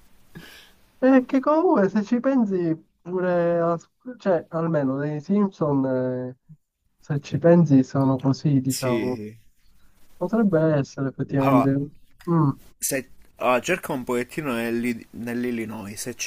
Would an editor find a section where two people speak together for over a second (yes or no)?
no